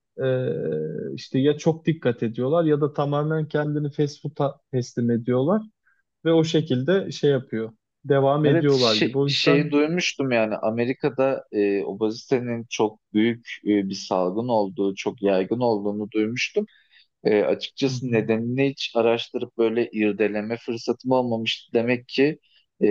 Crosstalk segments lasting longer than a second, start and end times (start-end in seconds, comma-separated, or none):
8.4-9.7